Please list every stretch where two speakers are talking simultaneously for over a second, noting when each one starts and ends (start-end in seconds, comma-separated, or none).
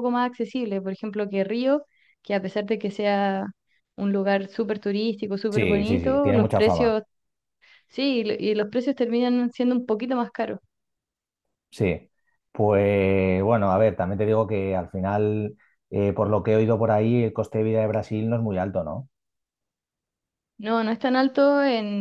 5.5-7.0